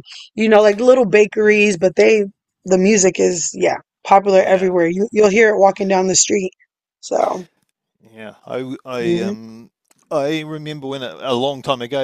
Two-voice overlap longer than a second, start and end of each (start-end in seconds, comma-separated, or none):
none